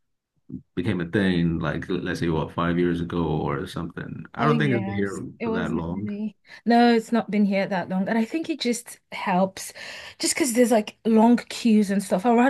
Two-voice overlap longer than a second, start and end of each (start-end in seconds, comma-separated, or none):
4.4-6.1